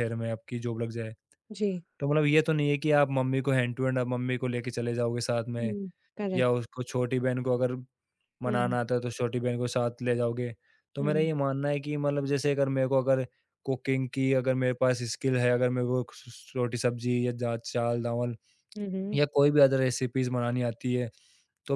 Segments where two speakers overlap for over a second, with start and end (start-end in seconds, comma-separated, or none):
none